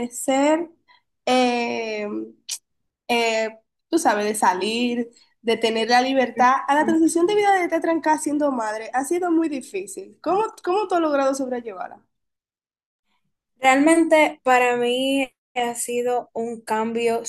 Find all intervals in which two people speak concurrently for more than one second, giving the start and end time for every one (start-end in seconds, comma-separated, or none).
none